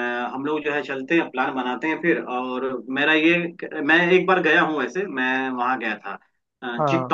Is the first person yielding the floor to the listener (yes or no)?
no